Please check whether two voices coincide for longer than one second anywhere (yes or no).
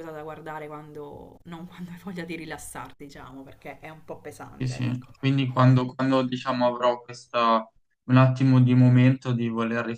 no